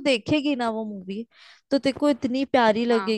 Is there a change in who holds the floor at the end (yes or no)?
no